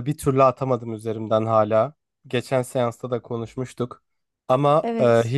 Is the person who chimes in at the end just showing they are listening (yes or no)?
yes